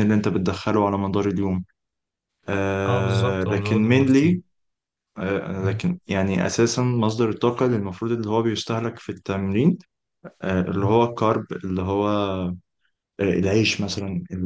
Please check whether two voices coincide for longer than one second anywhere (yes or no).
yes